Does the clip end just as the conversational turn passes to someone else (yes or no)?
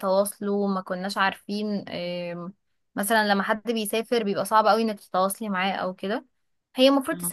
no